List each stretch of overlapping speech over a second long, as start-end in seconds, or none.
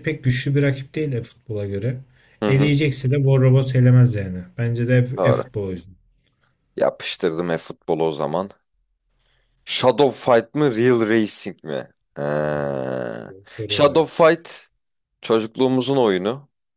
none